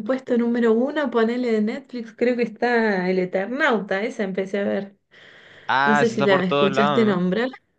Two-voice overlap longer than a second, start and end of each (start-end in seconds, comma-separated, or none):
5.8-7.3